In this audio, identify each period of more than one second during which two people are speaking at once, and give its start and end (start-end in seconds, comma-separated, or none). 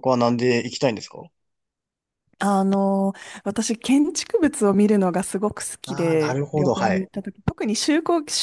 5.9-7.1